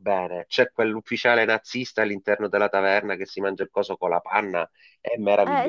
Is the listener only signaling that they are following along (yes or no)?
no